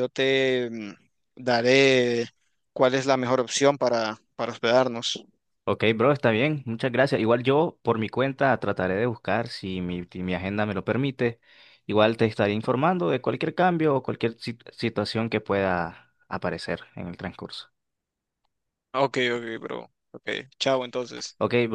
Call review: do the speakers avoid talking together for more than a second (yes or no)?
yes